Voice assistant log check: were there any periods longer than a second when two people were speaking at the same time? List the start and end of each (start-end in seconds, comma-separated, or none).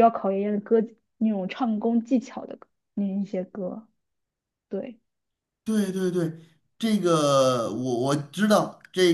none